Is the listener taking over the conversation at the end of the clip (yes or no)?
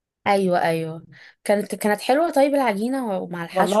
yes